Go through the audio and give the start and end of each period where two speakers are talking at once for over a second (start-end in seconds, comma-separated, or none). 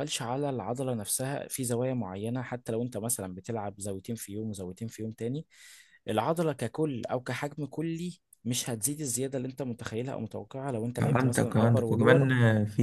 11.0-12.3